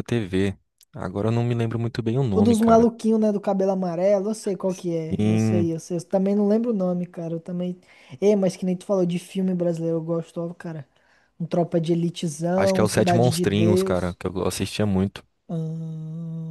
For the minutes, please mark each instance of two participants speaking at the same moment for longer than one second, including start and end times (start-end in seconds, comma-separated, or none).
12.6-14.2